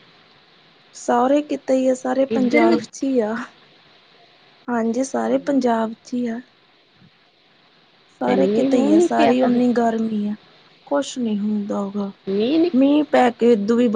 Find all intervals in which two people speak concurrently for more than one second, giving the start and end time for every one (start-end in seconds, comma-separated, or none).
8.2-9.6